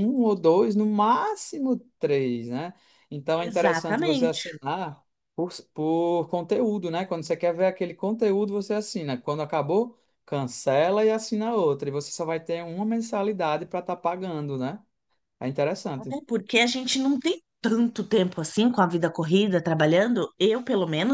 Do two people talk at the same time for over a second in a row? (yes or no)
yes